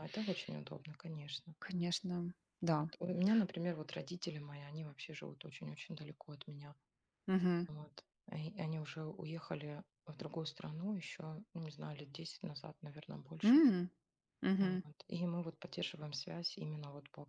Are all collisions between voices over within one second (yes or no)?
yes